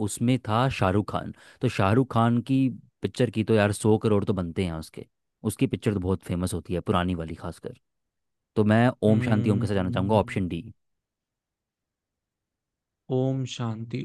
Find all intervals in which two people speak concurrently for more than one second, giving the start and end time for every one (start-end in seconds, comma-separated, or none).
9.1-10.4